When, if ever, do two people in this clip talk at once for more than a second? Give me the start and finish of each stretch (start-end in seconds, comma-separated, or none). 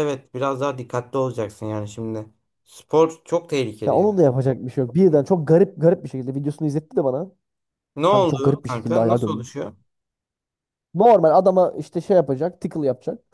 8.1-9.6